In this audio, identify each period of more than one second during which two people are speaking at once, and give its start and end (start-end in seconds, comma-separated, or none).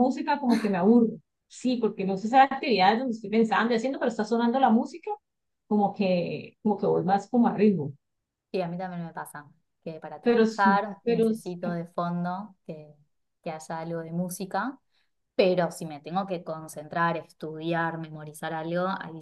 10.2-11.5